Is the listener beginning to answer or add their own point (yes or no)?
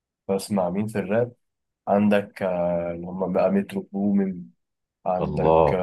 no